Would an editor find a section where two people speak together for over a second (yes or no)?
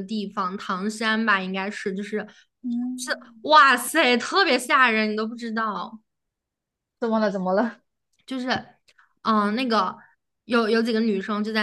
no